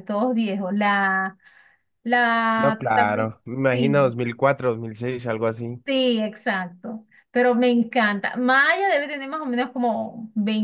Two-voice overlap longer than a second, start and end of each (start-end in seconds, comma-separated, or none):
2.5-4.2